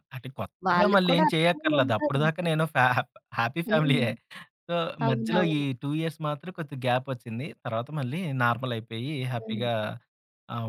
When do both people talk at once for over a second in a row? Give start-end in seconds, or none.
0.7-2.2